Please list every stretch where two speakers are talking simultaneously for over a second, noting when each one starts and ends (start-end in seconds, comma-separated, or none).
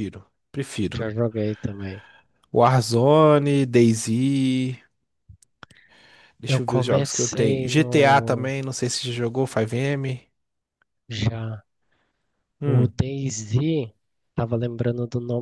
6.5-8.5